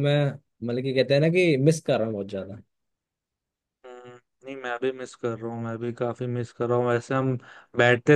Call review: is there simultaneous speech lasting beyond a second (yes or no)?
no